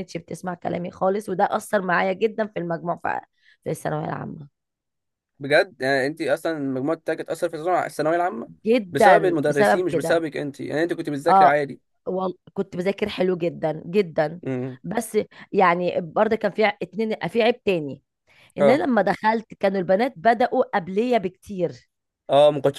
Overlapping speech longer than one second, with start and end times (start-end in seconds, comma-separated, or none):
8.9-10.2